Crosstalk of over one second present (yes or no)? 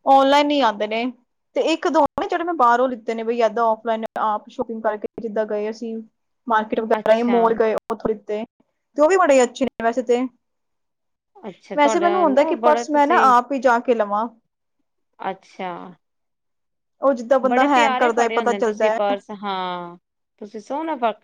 yes